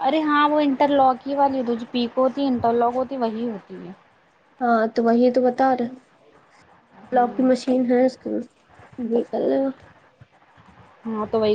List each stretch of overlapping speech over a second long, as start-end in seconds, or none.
none